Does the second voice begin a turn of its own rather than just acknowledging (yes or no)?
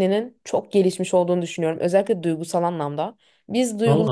no